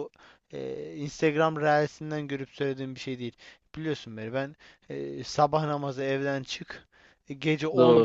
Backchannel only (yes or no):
yes